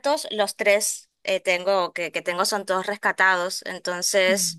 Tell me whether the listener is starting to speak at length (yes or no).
no